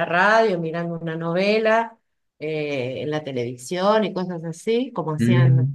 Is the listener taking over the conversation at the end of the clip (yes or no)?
yes